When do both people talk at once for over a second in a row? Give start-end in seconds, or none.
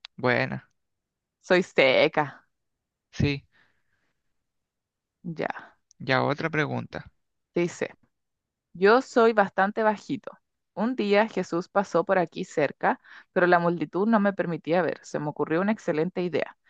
none